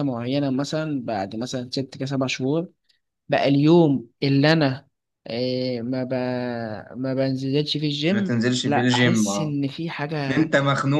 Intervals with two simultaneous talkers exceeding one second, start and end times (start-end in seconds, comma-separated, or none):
8.1-9.6